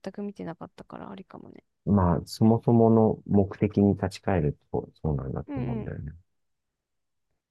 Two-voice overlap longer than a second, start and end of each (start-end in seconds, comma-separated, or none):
none